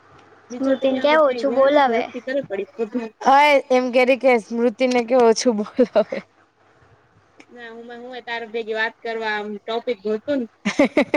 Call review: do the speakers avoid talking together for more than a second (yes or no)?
no